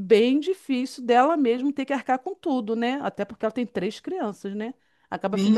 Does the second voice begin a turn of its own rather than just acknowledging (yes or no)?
yes